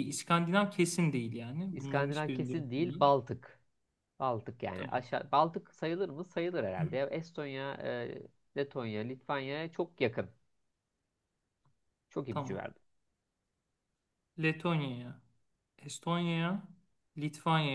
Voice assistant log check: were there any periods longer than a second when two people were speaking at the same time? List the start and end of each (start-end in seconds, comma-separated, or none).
1.7-3.2